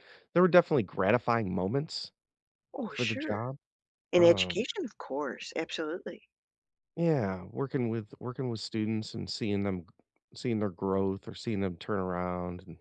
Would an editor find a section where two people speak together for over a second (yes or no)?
no